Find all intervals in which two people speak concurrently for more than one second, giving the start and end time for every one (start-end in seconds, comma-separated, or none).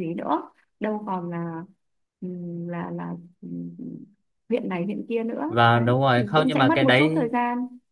5.5-7.3